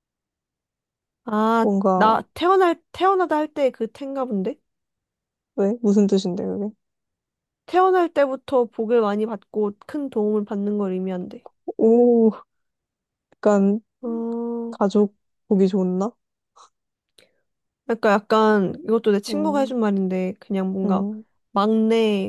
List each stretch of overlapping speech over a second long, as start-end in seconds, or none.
none